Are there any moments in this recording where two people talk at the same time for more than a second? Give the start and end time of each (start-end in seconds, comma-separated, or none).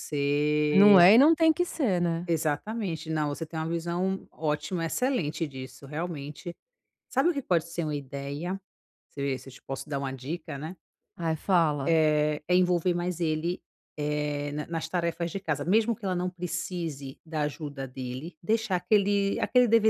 none